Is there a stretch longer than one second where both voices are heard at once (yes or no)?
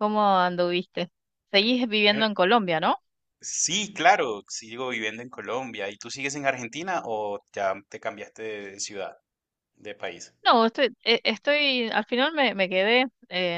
no